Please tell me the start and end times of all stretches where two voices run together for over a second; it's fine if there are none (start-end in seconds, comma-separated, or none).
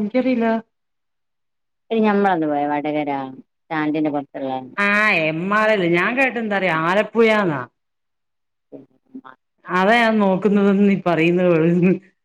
none